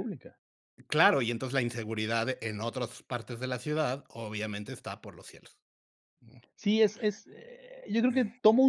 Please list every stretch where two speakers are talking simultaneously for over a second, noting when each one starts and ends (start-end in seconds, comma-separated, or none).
none